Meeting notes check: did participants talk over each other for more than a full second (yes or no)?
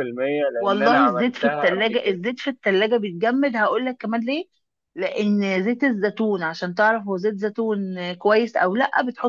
yes